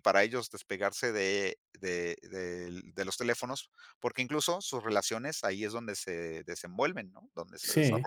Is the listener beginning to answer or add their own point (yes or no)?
yes